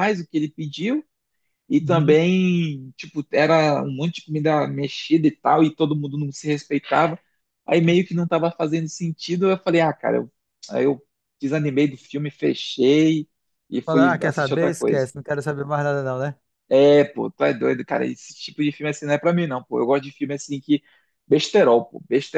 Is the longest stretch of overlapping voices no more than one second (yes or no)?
no